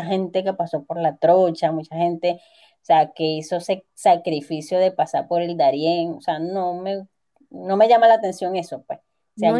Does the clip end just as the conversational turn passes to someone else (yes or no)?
no